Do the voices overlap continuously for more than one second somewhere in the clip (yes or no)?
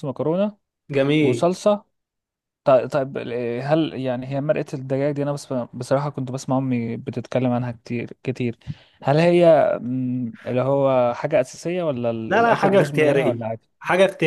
yes